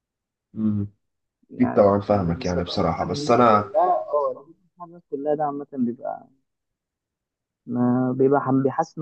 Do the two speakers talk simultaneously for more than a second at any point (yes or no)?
yes